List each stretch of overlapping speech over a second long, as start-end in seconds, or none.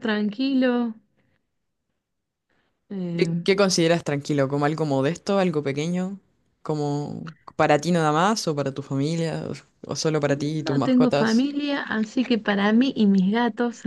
10.2-11.5